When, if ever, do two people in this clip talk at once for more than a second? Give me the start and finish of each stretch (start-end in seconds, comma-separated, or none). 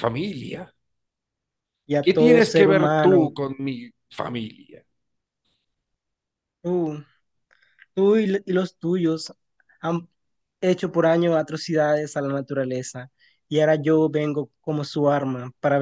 2.0-3.3